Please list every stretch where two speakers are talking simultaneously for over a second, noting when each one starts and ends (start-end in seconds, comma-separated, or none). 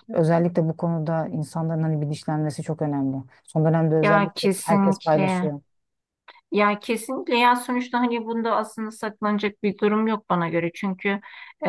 4.0-5.5